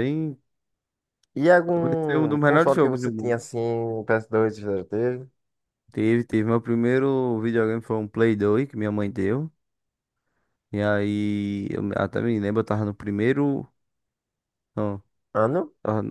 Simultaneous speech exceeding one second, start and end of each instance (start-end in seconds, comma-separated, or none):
1.8-3.5